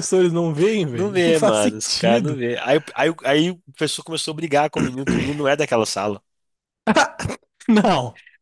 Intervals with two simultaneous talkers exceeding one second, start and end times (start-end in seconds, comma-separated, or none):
0.9-2.4